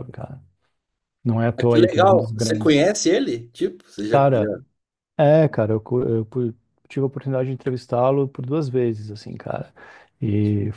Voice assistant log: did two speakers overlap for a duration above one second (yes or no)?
yes